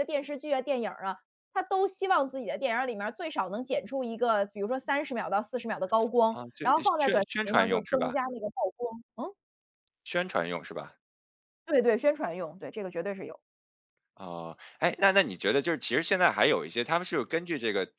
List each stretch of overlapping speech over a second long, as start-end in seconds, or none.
6.3-8.1